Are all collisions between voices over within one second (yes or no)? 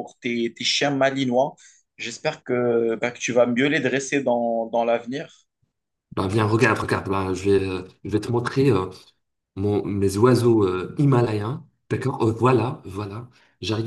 yes